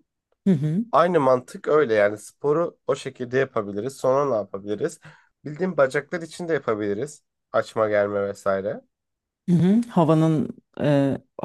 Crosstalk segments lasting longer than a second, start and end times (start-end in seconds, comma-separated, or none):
none